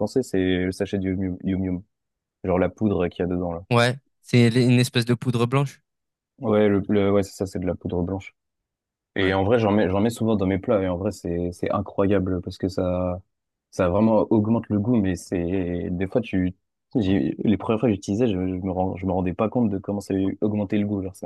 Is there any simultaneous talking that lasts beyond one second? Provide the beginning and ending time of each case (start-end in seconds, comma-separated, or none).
none